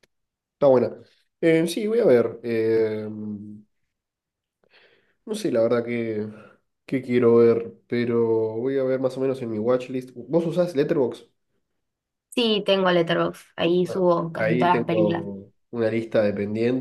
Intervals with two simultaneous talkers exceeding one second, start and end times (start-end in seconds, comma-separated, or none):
13.8-15.3